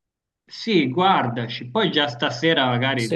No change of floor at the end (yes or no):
yes